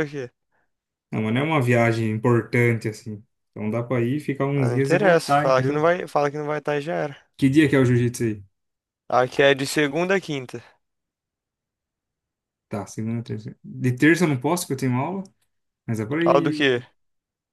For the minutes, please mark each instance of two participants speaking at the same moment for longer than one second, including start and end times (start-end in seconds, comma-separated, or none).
4.5-5.8